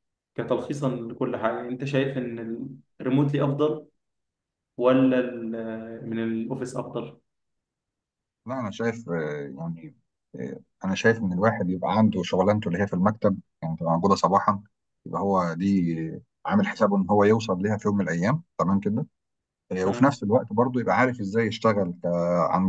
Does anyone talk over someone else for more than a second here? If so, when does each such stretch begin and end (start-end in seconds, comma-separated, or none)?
none